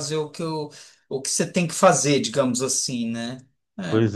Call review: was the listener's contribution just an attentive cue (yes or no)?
no